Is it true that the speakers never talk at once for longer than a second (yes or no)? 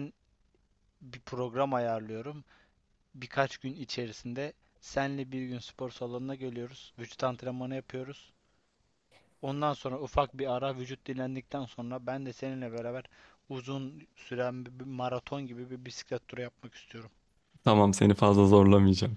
yes